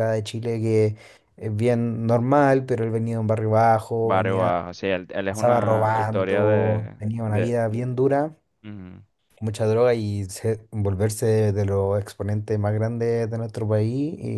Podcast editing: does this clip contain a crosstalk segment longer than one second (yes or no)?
yes